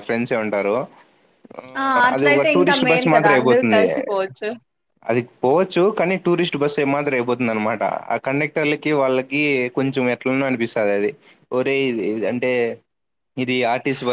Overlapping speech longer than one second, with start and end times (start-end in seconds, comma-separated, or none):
2.1-3.8